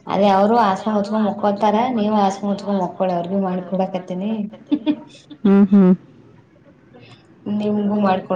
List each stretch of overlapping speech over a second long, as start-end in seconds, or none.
0.7-4.3